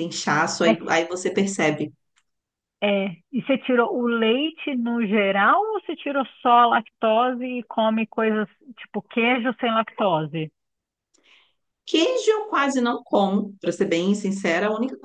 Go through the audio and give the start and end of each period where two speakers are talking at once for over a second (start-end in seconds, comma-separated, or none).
none